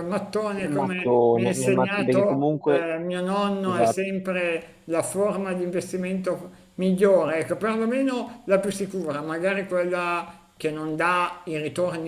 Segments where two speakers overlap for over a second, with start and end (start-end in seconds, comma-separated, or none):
0.6-2.9